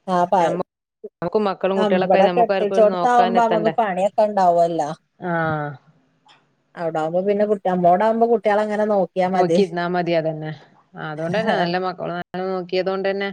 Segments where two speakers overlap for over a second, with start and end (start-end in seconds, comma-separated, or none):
1.8-3.7